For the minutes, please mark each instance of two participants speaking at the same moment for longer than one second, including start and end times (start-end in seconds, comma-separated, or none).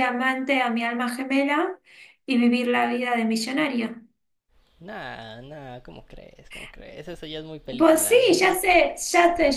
none